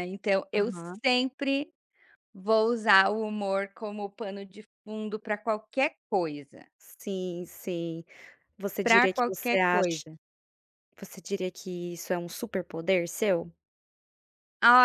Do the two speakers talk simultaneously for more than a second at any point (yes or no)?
yes